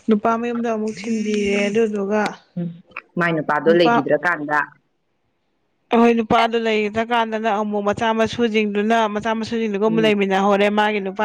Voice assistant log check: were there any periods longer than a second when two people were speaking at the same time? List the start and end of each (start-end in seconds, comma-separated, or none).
none